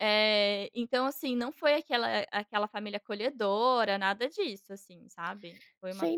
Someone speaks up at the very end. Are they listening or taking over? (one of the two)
taking over